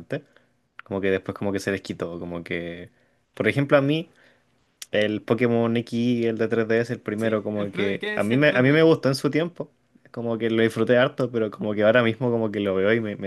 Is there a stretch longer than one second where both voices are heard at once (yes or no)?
yes